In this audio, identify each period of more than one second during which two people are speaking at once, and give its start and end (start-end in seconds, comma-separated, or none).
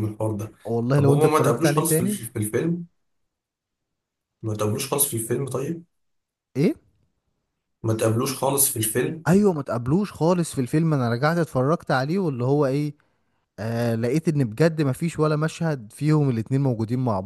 0.9-2.2